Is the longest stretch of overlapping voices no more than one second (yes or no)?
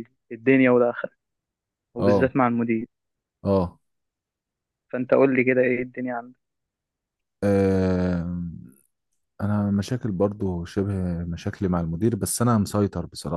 yes